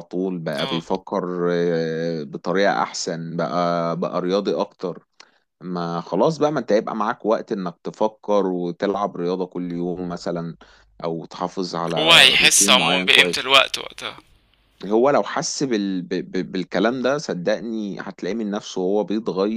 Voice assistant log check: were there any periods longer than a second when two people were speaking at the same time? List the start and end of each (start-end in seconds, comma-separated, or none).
12.0-13.5